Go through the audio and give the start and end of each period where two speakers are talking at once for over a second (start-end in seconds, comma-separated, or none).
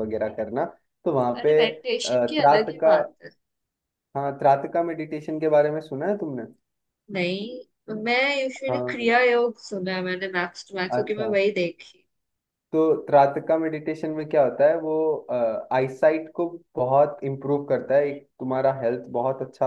1.4-3.0